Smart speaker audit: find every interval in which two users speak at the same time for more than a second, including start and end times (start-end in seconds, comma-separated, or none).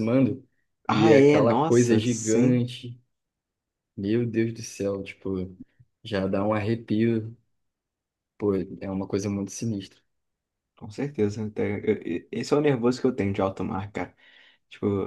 0.9-2.6